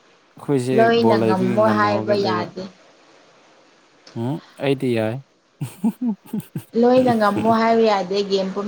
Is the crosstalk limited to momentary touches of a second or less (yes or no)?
no